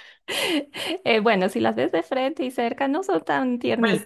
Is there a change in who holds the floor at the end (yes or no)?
yes